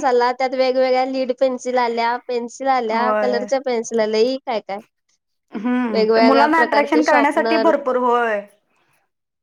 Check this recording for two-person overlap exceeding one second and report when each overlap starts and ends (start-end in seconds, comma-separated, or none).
5.9-7.7